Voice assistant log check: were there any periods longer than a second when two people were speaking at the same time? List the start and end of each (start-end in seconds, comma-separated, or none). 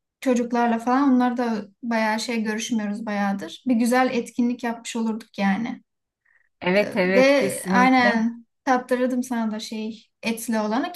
6.7-8.3